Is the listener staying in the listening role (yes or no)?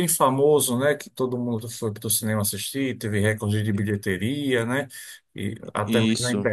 yes